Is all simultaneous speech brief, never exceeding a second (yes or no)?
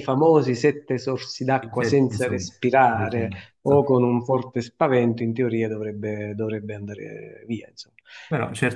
no